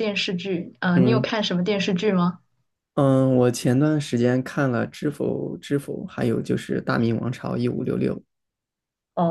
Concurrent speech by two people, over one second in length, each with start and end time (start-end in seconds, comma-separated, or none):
none